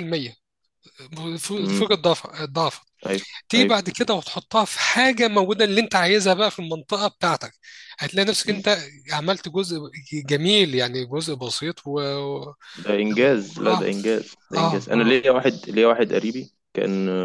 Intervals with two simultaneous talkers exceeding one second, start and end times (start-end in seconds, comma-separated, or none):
none